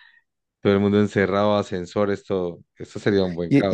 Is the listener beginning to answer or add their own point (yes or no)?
yes